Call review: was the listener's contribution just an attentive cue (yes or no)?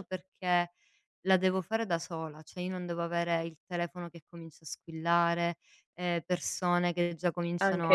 yes